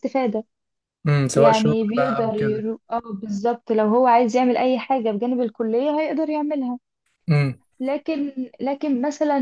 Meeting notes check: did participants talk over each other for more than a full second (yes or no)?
yes